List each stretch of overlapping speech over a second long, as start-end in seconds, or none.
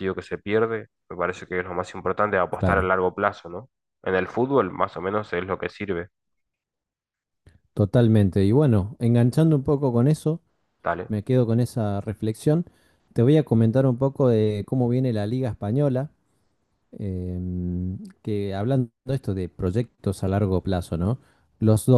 none